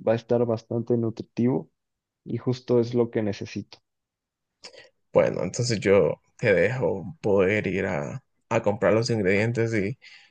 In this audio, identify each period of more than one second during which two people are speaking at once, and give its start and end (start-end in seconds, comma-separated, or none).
none